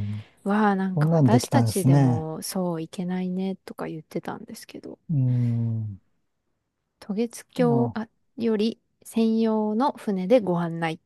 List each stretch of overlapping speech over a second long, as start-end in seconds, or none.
0.9-2.3